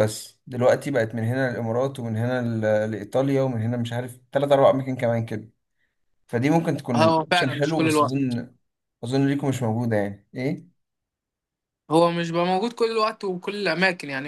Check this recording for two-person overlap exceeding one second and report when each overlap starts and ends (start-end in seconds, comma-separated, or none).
7.0-8.4